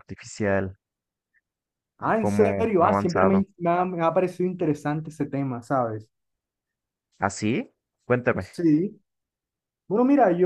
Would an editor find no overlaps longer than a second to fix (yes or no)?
no